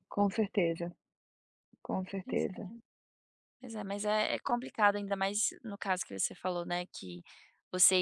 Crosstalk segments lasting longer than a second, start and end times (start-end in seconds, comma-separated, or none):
none